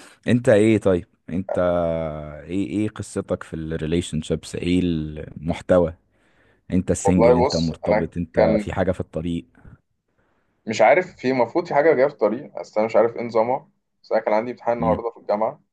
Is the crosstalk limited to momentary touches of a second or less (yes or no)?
no